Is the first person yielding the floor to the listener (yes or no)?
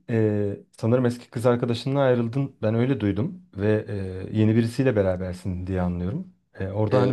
no